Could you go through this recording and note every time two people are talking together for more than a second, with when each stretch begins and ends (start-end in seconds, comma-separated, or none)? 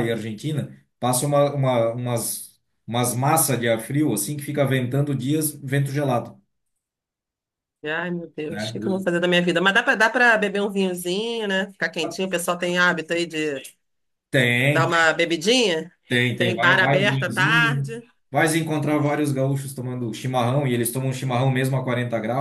16.4-18.0